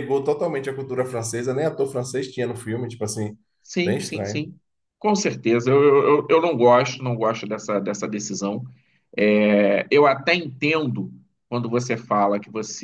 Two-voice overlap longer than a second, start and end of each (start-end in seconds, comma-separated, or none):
none